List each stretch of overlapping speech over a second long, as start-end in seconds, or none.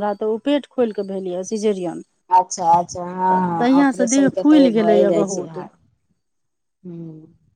3.3-5.6